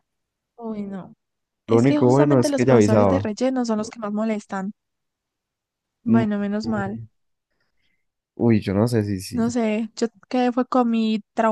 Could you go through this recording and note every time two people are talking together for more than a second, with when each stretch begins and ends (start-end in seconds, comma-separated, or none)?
1.7-3.3